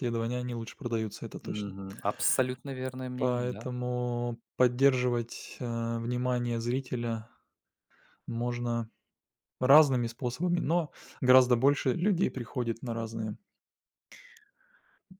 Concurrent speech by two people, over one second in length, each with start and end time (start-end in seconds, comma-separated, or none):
none